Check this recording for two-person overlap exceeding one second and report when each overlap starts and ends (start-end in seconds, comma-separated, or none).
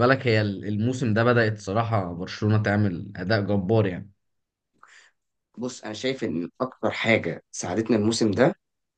none